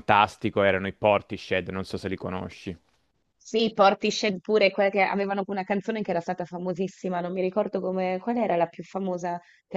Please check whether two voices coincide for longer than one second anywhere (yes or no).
no